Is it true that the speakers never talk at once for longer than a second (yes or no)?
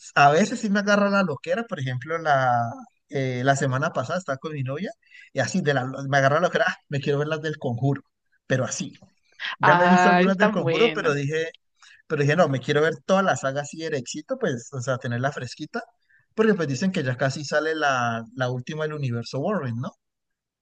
no